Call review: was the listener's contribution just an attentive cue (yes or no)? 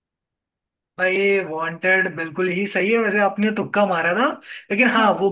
yes